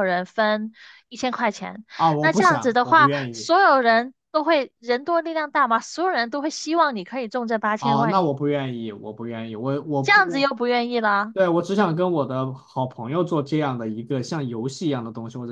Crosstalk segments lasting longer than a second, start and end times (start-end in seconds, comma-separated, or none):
2.0-3.5